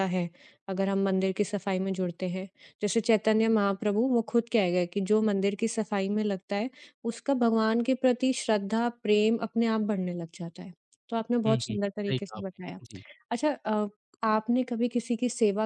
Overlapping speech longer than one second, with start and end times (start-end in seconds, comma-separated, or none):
11.4-12.8